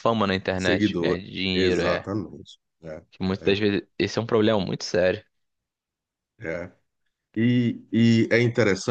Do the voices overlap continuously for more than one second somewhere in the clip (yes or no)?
yes